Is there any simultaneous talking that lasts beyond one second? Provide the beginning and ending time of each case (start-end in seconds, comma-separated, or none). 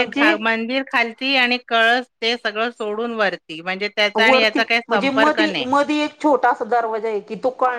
none